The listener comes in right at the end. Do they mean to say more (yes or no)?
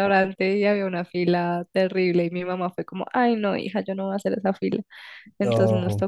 no